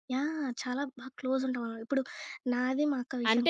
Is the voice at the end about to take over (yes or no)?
yes